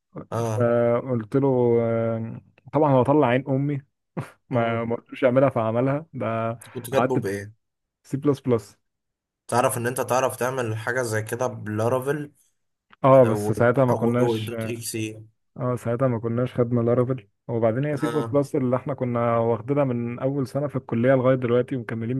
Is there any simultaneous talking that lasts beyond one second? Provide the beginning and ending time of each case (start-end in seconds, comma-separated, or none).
13.1-14.5